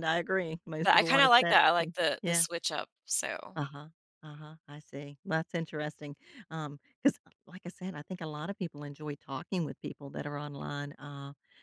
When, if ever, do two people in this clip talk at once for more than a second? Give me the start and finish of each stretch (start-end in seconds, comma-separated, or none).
0.8-2.4